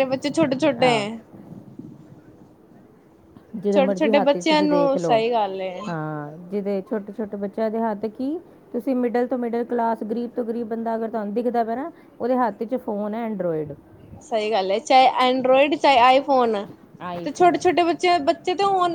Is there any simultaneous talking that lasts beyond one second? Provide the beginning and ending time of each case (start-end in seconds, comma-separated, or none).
3.7-5.2